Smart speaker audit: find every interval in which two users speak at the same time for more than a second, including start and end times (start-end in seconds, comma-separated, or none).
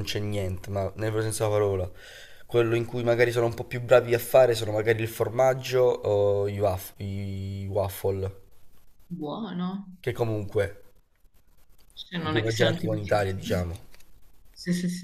12.2-13.6